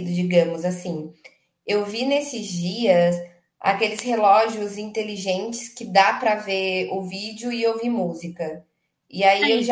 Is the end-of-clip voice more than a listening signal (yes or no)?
no